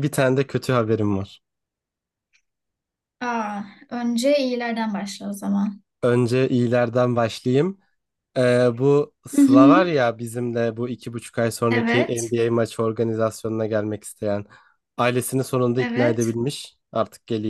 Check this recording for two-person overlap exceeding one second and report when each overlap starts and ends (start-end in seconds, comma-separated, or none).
none